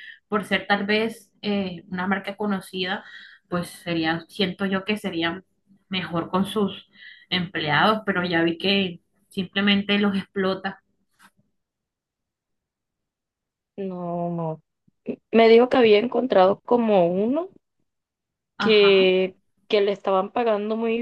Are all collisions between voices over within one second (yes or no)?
yes